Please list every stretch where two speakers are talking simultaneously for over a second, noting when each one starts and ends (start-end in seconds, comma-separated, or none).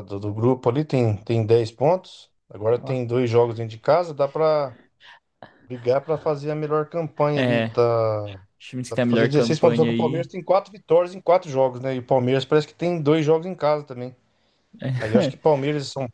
8.9-10.3